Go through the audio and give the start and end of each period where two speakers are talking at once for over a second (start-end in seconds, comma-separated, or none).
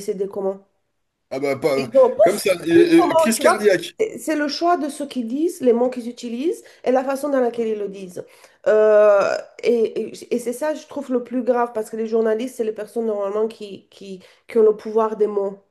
1.8-3.6